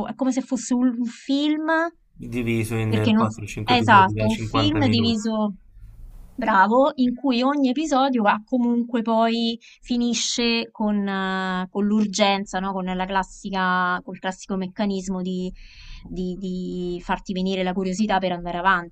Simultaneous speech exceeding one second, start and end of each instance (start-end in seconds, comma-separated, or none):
2.9-5.2